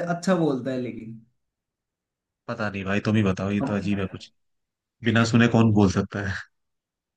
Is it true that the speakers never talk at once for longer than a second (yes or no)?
yes